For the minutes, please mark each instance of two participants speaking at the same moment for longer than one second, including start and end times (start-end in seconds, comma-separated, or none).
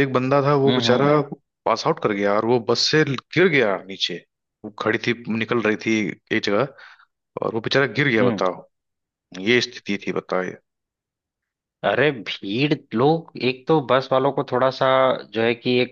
none